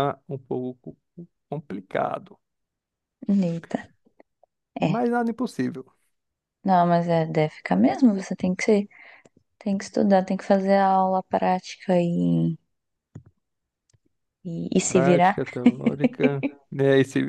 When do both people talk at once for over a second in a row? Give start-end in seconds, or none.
none